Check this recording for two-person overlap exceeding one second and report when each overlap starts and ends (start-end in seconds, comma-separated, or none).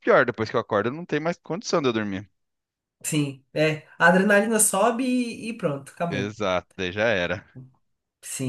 none